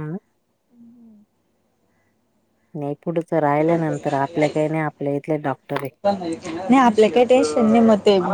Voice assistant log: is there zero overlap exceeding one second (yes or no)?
yes